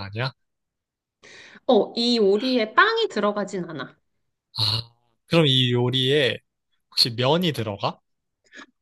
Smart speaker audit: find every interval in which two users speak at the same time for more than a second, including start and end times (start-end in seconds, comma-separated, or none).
none